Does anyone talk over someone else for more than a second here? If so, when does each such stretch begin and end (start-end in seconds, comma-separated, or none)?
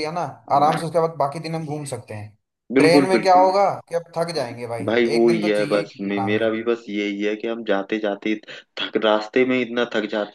4.9-6.6